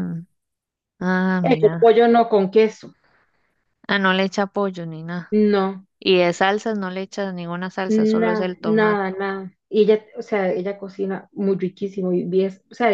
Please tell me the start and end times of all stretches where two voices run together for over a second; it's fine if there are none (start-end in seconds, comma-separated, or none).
7.9-9.1